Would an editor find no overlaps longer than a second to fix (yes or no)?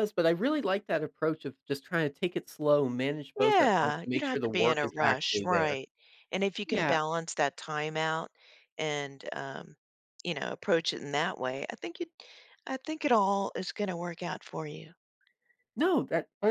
no